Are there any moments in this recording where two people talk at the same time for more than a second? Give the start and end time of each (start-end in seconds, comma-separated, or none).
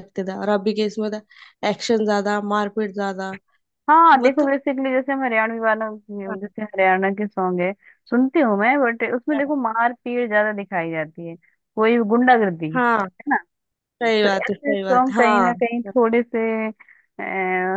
14.2-15.5